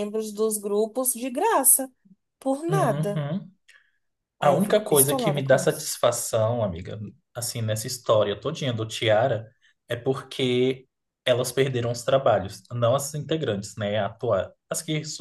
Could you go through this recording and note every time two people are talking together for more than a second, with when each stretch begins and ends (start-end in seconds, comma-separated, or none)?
4.4-5.9